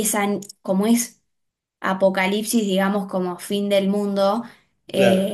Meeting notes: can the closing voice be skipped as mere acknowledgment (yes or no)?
yes